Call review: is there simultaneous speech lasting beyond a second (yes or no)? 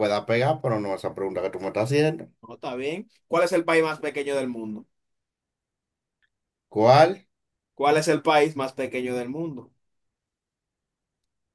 no